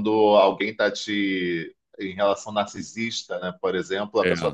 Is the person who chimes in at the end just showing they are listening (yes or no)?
yes